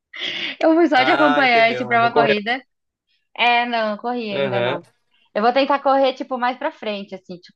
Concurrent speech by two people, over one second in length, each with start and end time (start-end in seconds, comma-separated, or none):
0.9-2.4